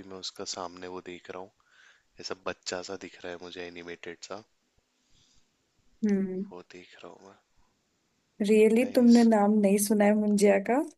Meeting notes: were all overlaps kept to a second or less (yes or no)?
yes